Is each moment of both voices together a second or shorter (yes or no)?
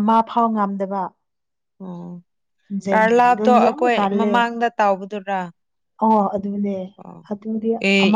no